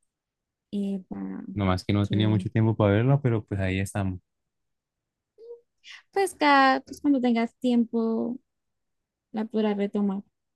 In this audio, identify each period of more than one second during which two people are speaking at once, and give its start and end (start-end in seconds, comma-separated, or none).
none